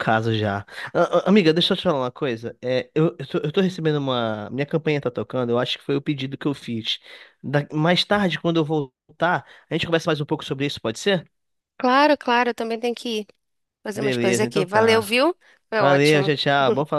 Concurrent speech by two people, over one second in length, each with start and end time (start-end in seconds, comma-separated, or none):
13.9-15.2